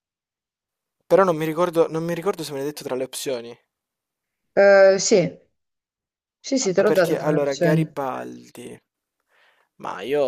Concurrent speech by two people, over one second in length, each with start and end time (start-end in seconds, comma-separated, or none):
6.8-8.0